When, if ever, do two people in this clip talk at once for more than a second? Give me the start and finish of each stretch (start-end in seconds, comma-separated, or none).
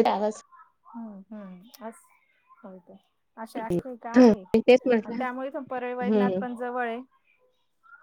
none